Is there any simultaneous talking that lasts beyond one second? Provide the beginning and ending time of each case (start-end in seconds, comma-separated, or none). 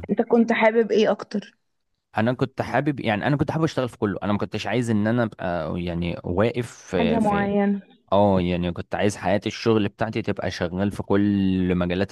none